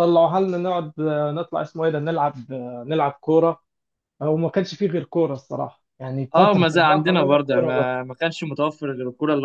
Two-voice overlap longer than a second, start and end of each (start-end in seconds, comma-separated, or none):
6.3-8.0